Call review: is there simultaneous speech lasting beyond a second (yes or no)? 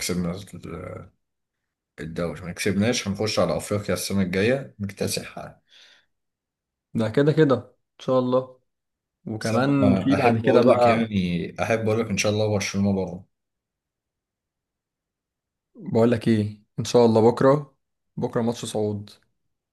yes